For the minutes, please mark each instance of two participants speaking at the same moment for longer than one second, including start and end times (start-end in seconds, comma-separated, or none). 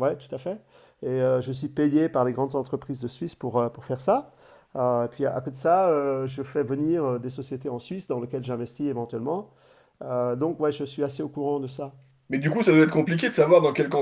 none